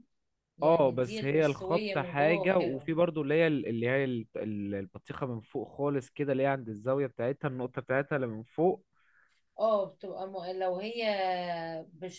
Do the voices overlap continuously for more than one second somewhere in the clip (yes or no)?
yes